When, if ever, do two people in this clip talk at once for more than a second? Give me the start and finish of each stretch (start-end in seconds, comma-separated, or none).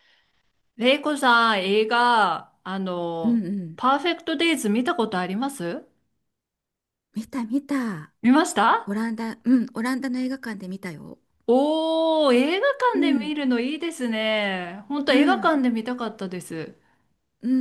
none